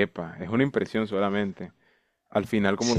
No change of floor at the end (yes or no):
yes